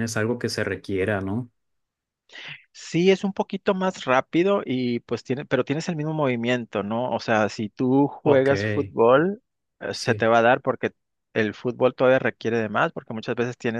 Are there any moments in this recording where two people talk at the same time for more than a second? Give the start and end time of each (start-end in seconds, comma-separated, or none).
none